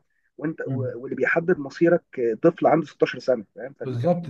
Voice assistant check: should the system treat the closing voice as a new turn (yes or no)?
yes